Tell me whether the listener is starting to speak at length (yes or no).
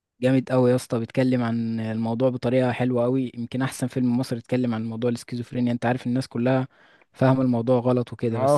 yes